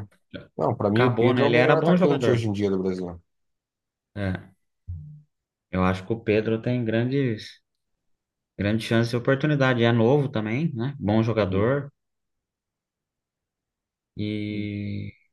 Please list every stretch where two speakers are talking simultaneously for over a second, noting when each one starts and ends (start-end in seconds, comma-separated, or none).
0.9-2.5